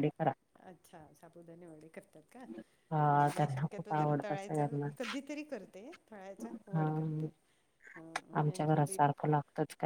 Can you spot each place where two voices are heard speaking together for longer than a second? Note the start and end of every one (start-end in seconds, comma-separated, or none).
3.1-4.6